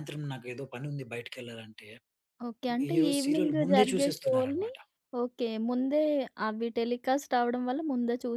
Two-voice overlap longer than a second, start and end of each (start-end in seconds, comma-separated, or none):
2.9-4.7